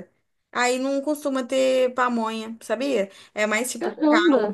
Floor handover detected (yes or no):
no